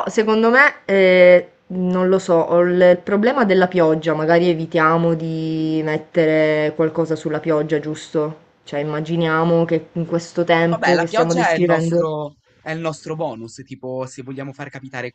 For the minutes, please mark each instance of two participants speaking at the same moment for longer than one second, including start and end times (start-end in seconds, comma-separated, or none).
10.7-12.0